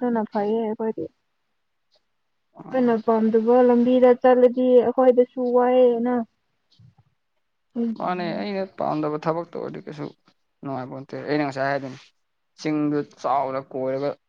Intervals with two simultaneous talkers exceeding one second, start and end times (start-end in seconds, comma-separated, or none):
none